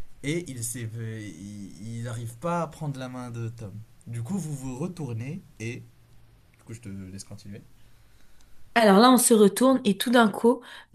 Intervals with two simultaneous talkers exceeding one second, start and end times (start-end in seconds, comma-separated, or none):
none